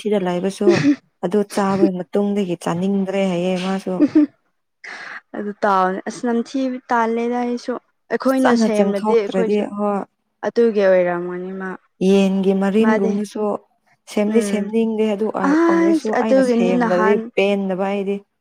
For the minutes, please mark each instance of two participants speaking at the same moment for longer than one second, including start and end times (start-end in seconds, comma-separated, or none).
8.3-9.6, 15.5-17.2